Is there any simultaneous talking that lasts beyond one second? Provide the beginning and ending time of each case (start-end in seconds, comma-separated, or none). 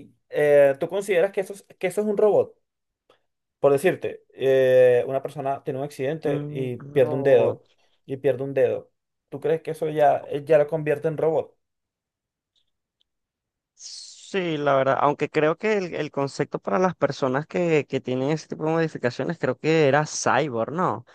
6.3-7.6